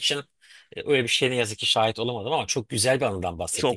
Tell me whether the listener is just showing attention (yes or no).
no